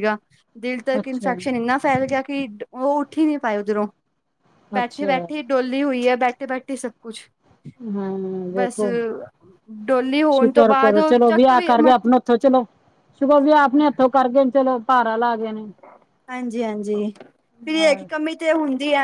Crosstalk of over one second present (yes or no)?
yes